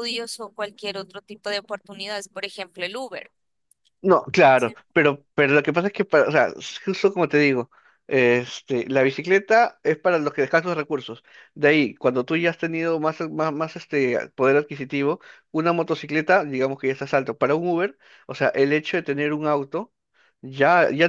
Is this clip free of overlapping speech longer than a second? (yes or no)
yes